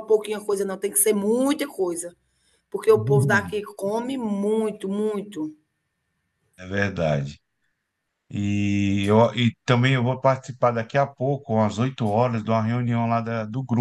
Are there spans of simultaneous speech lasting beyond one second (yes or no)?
no